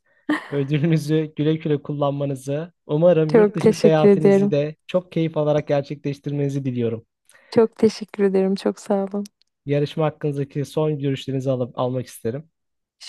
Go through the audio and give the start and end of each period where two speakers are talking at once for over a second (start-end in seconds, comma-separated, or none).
3.3-4.5